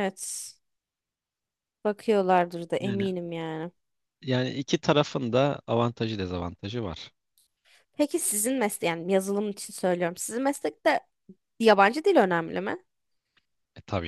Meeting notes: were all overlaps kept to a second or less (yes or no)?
yes